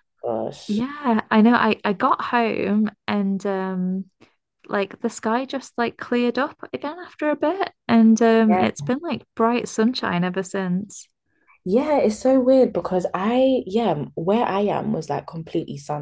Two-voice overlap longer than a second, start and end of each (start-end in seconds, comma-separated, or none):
none